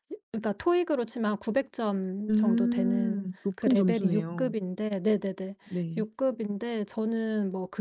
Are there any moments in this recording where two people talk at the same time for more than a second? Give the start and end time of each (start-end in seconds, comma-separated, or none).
2.3-4.5